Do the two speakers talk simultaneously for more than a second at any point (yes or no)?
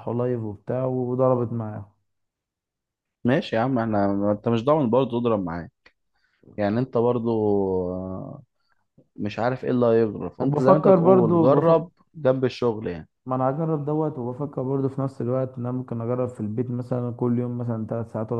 yes